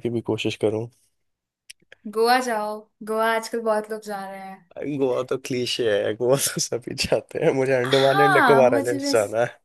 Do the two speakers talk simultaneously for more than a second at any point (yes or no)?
yes